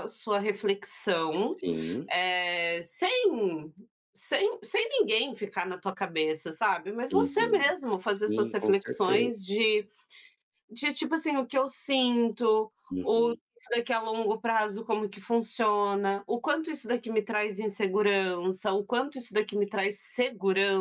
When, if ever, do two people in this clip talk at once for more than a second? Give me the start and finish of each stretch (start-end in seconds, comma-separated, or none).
7.1-9.3